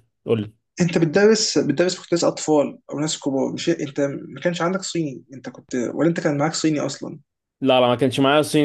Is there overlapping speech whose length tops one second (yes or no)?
no